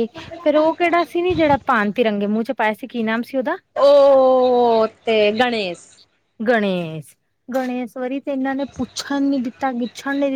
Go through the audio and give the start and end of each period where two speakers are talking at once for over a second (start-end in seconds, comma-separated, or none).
none